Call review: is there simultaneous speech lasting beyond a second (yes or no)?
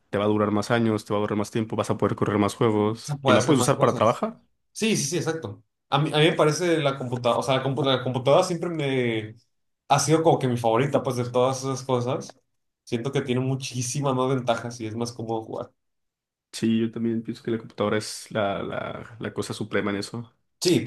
yes